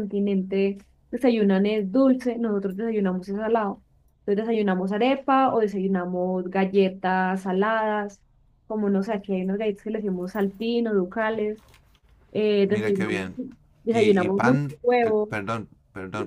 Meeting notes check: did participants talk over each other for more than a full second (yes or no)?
yes